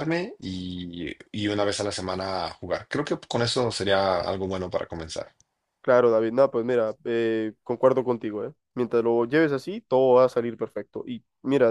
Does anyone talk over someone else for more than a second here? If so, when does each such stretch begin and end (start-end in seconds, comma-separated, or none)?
none